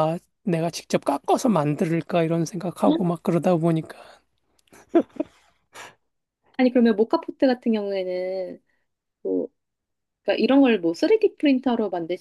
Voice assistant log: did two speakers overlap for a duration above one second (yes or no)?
no